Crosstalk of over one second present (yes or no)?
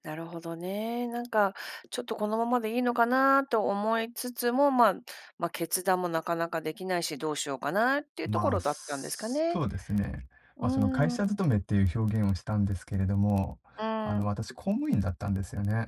yes